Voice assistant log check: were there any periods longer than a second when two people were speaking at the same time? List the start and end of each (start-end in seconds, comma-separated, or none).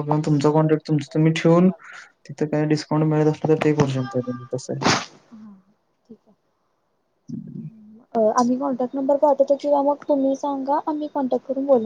none